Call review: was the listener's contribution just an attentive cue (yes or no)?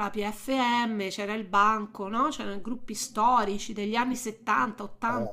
no